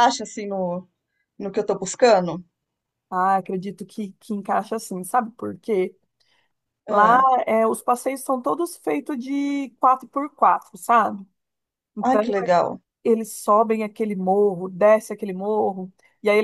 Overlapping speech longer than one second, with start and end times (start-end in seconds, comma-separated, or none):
none